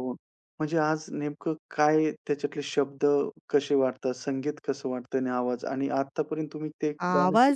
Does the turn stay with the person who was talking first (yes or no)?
no